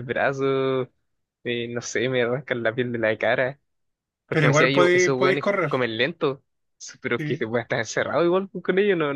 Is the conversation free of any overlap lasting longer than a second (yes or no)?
no